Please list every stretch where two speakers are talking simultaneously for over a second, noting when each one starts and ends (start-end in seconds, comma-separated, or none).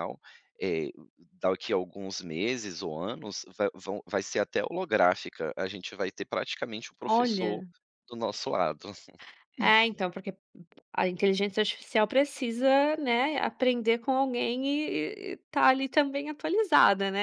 none